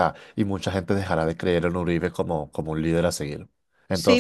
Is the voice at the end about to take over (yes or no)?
yes